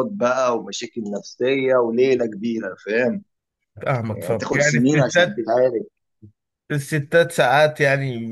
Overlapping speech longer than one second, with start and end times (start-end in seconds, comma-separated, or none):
4.1-5.4